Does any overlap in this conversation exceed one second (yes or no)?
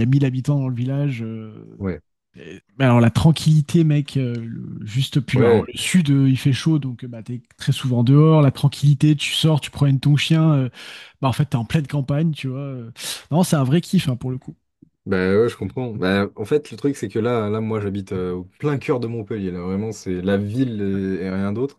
no